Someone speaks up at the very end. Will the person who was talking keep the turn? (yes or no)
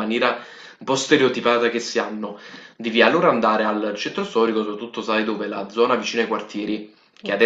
yes